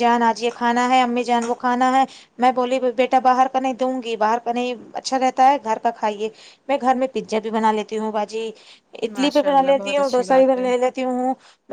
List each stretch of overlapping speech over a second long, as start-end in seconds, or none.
9.2-10.7